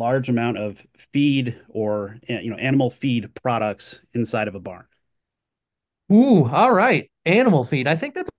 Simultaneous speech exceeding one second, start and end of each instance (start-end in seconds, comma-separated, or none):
none